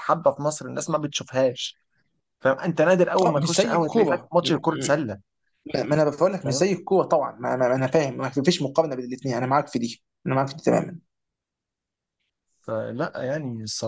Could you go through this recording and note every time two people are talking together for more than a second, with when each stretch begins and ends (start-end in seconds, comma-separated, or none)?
3.2-5.2